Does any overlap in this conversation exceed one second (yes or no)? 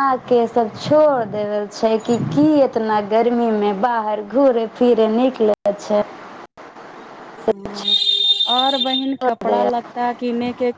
no